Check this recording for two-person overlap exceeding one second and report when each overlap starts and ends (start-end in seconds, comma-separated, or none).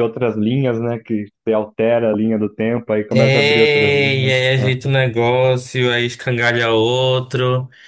3.1-4.7